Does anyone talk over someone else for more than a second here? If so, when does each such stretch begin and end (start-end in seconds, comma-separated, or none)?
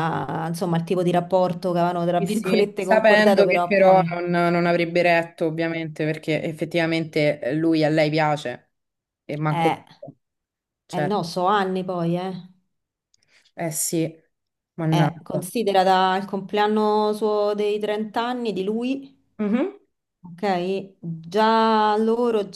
2.3-4.1